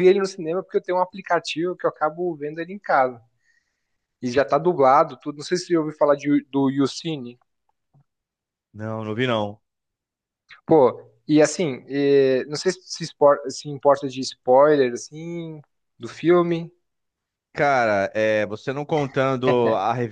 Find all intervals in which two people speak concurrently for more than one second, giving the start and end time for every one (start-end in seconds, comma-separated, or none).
none